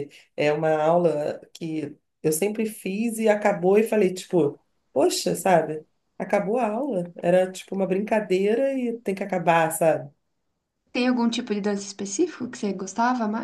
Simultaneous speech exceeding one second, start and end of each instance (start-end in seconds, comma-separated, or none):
none